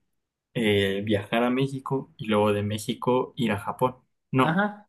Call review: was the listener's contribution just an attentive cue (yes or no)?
no